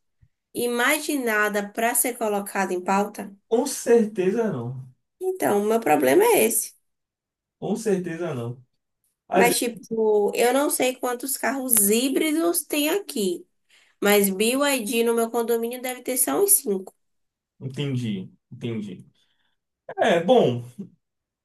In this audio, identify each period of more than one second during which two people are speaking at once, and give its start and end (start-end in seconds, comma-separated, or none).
none